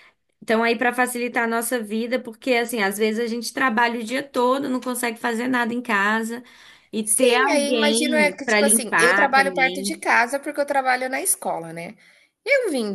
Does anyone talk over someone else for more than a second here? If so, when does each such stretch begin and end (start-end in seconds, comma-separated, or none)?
7.0-10.0